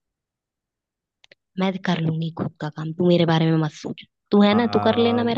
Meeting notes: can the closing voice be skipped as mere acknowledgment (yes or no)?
no